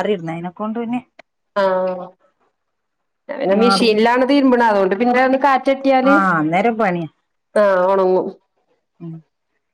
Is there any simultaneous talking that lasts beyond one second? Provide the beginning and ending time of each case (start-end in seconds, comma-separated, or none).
none